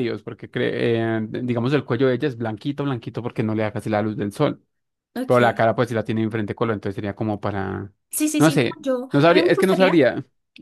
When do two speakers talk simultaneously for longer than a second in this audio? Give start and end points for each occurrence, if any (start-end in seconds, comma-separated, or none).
8.4-10.0